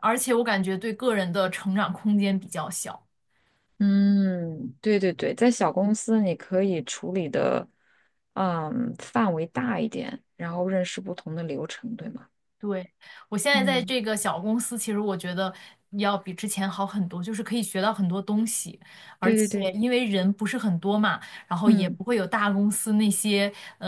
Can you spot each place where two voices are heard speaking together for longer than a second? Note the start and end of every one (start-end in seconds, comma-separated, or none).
none